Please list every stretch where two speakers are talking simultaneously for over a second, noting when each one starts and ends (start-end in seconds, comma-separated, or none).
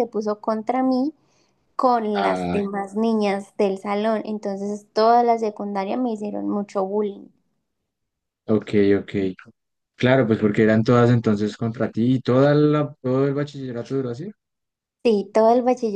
none